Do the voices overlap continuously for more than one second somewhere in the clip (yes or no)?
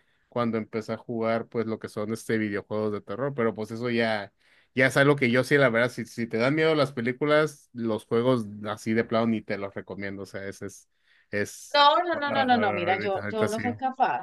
yes